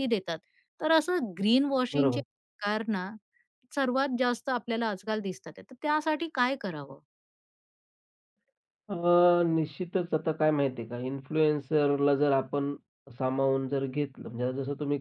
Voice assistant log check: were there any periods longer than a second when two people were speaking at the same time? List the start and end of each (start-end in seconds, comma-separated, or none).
none